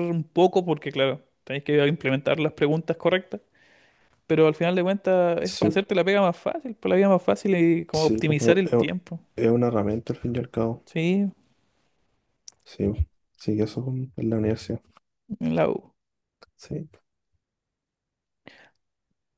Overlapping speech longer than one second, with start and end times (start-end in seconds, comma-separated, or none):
7.9-9.2